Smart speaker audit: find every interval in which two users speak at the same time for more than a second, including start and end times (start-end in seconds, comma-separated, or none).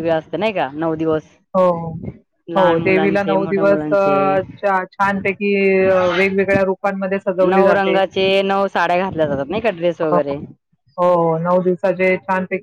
2.6-4.3